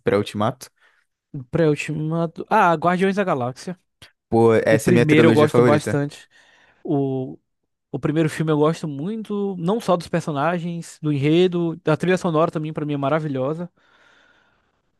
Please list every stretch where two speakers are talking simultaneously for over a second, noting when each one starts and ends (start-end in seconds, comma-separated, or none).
4.7-6.0